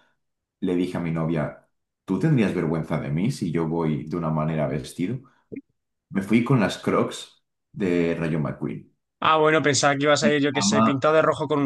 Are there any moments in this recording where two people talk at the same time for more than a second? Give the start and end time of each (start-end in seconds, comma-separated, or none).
none